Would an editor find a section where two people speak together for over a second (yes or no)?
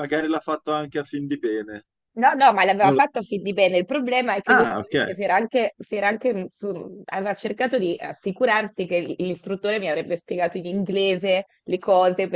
no